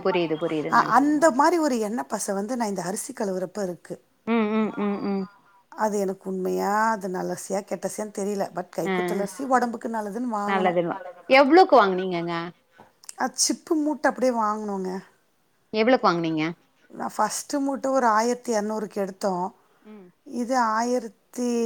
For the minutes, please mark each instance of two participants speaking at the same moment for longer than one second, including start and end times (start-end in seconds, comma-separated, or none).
none